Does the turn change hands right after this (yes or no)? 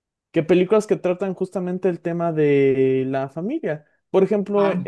no